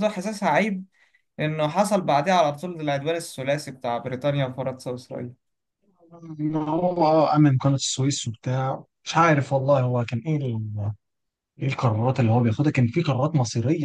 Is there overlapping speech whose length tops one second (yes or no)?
no